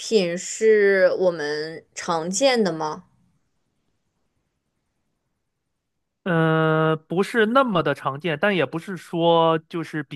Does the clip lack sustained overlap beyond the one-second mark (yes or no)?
yes